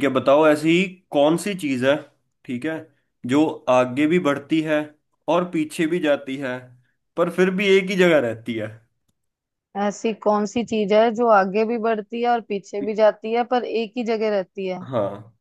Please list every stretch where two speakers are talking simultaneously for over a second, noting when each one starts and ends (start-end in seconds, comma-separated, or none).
none